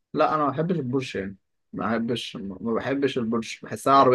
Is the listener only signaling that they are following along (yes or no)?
yes